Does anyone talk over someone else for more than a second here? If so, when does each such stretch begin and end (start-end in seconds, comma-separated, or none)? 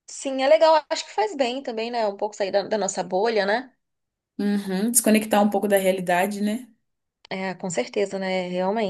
none